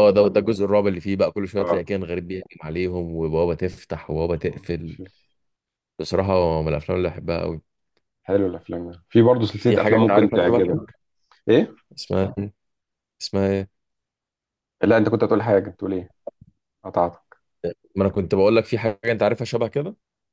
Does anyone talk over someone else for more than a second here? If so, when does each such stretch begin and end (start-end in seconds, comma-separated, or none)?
9.7-10.9